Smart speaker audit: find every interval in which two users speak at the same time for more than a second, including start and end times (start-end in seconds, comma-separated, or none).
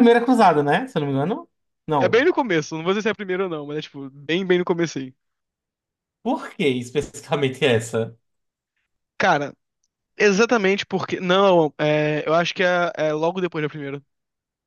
none